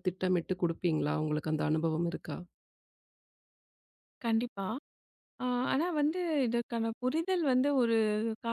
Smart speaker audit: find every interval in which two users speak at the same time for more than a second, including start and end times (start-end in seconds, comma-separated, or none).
none